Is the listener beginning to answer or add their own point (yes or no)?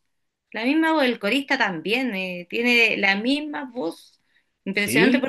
no